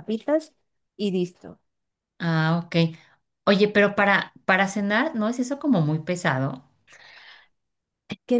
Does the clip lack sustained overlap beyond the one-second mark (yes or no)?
yes